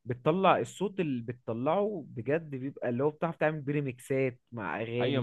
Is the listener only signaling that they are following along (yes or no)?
no